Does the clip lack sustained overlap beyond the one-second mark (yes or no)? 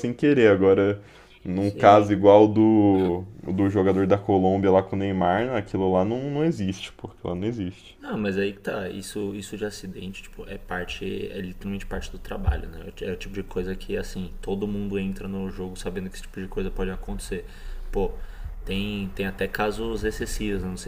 yes